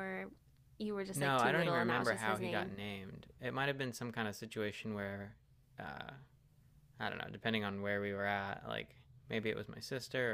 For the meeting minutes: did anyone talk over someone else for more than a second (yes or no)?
yes